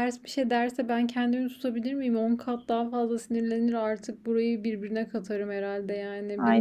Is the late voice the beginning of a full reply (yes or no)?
yes